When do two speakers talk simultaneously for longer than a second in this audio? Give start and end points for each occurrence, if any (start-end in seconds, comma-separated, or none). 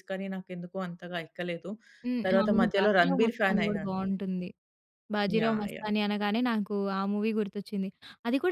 2.3-4.0